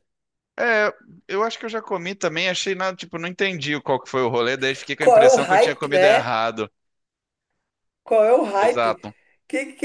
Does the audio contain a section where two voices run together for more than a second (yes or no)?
yes